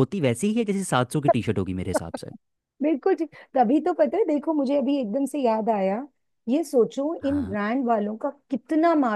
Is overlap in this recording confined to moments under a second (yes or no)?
yes